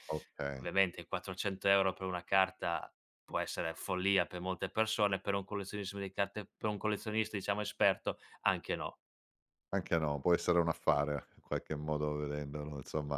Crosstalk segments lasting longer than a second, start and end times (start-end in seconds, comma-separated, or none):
none